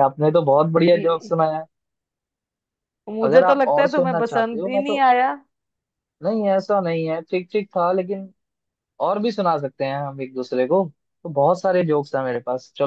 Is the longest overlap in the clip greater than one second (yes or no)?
yes